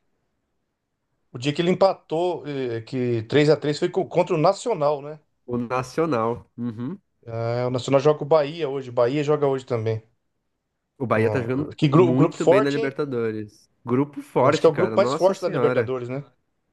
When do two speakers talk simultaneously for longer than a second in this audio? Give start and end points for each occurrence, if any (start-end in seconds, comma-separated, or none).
11.1-13.0, 14.4-15.9